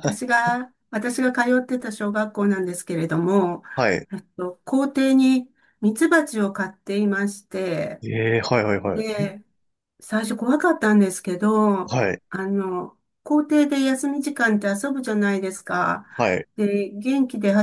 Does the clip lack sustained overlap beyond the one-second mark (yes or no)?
yes